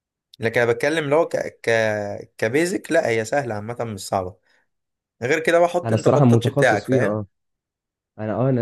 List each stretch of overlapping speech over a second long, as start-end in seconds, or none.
5.8-7.2